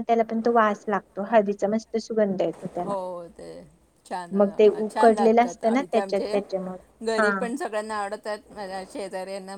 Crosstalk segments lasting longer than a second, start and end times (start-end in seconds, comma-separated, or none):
4.9-6.4